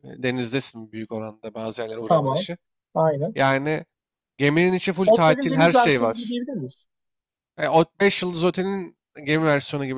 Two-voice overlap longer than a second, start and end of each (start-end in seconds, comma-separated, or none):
5.0-6.4